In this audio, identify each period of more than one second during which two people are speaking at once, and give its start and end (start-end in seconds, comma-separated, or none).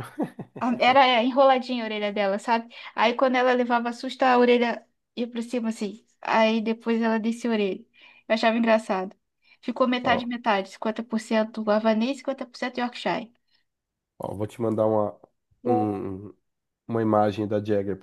none